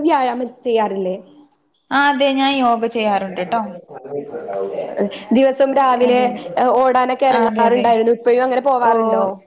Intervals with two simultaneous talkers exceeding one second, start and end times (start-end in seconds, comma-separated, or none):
none